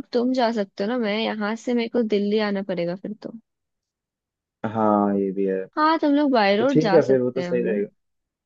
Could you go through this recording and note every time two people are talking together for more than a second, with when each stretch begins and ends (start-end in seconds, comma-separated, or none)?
6.6-7.8